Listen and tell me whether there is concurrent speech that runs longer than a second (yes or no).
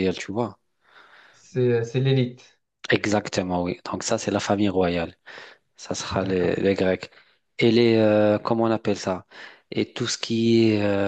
no